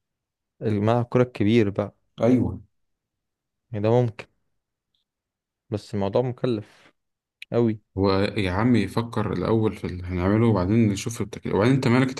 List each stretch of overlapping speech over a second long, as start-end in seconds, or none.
none